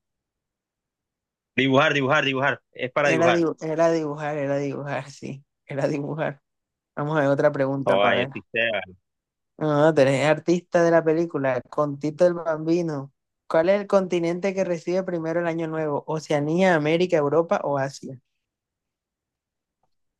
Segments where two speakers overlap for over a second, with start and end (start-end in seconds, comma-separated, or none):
none